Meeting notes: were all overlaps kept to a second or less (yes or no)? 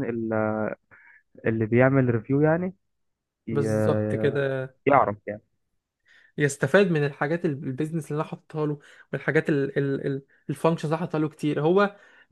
yes